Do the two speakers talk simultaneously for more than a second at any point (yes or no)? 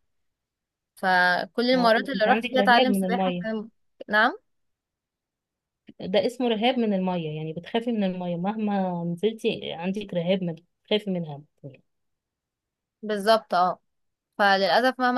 yes